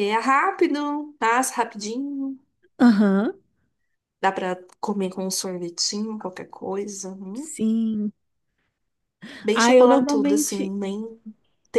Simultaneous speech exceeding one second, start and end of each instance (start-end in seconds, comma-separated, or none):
9.5-10.7